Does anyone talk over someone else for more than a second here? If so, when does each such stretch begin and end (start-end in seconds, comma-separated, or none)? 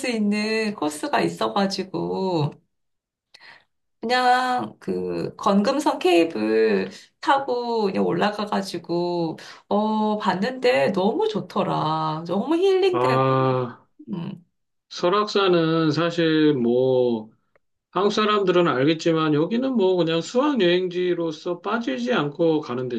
none